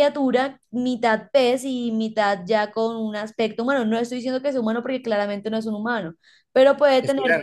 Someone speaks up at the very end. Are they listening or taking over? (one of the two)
listening